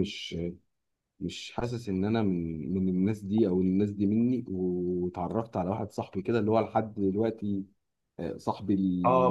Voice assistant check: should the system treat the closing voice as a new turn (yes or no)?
yes